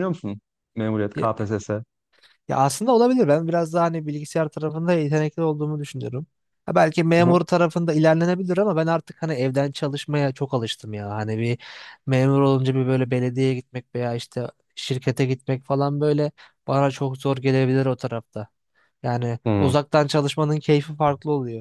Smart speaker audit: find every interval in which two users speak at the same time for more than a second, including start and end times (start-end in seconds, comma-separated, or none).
none